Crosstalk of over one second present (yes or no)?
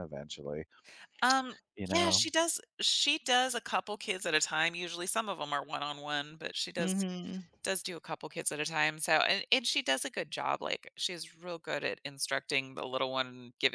no